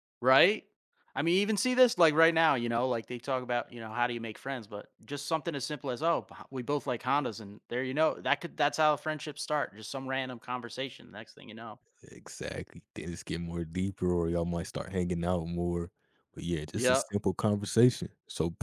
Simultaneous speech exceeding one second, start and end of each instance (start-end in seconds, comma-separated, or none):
none